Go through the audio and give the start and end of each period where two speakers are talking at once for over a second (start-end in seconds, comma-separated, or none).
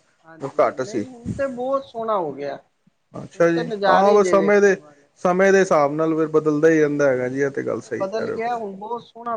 3.4-4.8